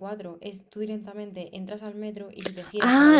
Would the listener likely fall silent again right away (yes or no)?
no